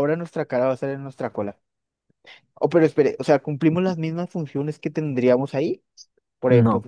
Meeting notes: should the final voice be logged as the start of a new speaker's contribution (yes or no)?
yes